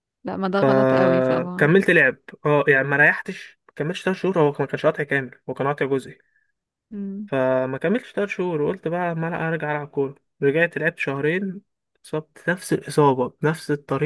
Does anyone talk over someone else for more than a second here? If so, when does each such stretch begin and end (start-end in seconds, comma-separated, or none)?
0.5-1.7